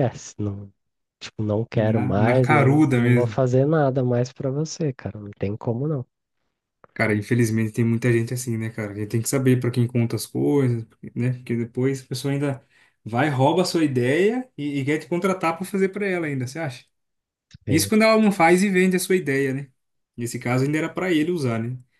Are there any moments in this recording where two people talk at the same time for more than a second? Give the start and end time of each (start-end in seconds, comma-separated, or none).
1.7-3.4